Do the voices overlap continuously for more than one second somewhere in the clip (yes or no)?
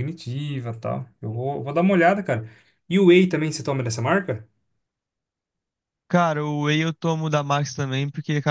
no